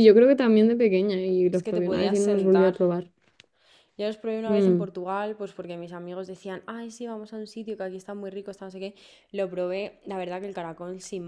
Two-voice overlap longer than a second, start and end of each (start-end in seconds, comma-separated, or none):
1.5-2.8